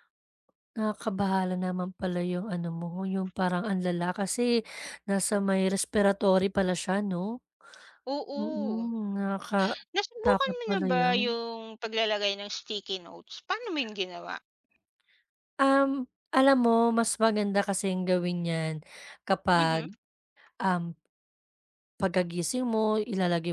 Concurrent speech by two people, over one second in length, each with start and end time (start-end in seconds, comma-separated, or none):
9.9-11.4